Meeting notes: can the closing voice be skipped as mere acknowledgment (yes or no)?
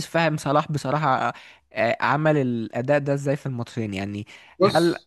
yes